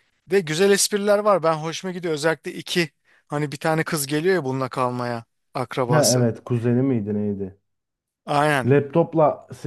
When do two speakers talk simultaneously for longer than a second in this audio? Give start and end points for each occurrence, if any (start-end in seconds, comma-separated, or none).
none